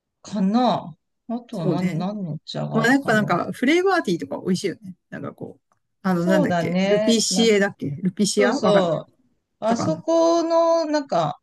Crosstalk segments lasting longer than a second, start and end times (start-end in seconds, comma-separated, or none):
6.2-7.5